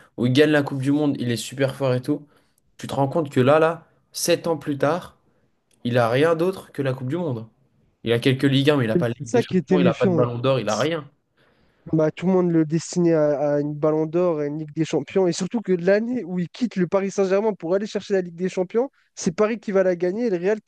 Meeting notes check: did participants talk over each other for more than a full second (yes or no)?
yes